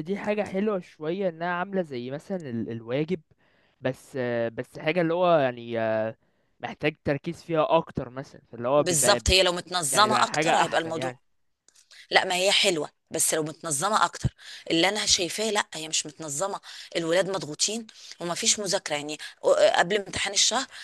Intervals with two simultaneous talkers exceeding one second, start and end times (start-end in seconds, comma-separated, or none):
9.9-11.2